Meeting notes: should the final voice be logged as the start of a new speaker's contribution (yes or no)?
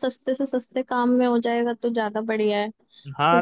yes